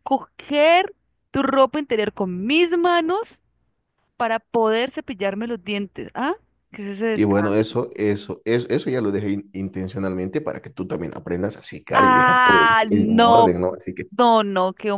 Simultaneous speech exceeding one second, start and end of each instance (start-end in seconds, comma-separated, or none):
11.9-13.7